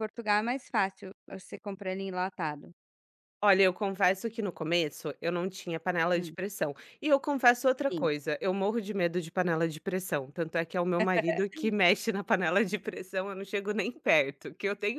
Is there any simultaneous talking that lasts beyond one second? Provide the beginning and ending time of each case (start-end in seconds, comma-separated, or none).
none